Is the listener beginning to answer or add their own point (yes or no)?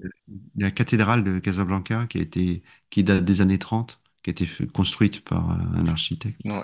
yes